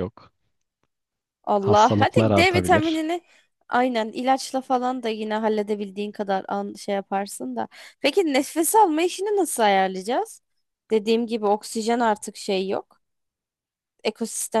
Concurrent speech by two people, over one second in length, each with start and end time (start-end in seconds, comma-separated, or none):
1.6-3.0